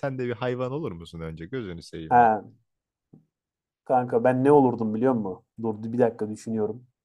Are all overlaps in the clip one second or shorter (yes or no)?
yes